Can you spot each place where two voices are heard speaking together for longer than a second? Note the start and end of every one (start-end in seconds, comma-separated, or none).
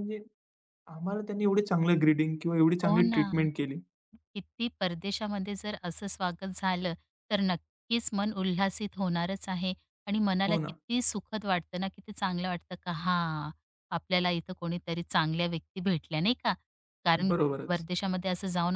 none